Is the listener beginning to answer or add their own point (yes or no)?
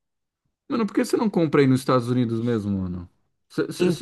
no